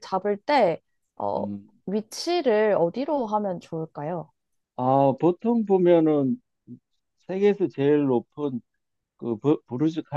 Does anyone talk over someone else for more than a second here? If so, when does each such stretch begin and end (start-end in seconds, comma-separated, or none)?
none